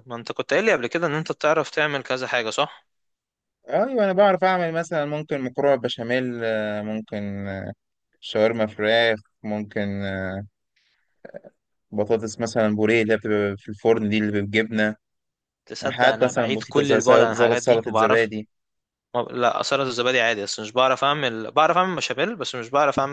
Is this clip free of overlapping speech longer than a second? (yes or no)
no